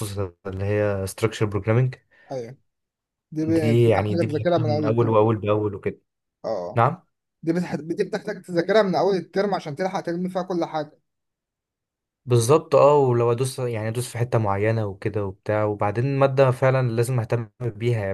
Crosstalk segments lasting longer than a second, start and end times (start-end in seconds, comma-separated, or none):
3.5-5.3